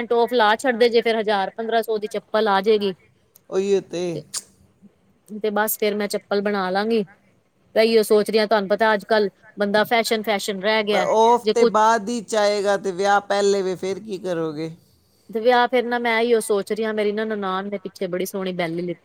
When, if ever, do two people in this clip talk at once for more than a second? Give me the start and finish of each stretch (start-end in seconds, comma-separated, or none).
none